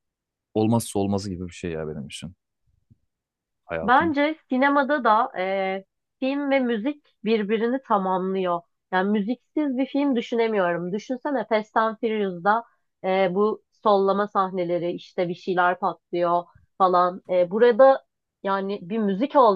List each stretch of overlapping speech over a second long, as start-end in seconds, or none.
none